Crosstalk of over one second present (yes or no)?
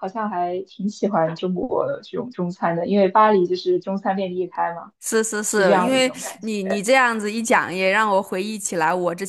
yes